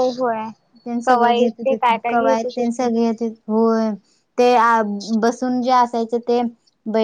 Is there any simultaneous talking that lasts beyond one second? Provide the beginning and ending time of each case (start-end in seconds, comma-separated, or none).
1.1-2.9